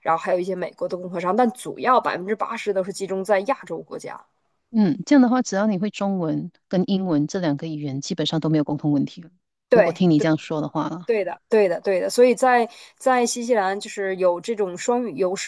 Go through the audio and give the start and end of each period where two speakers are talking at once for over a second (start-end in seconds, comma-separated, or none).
none